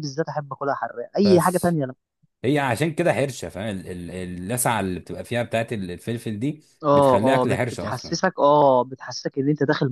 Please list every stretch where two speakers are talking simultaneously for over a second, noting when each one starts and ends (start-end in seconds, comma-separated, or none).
6.8-8.2